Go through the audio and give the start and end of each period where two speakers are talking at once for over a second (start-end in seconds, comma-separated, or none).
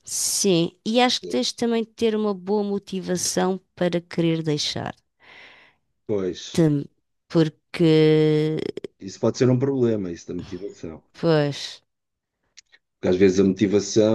none